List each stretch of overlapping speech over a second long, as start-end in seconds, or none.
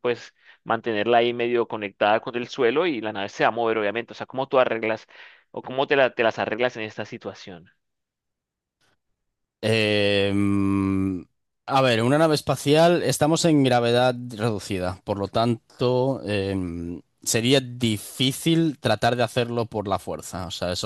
none